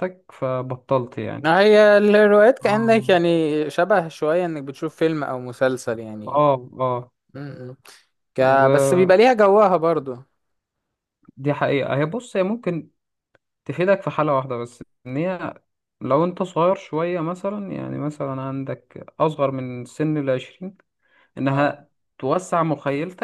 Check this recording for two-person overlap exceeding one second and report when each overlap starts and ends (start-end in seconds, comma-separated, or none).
none